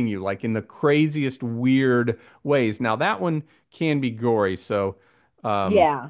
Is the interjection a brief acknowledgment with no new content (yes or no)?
yes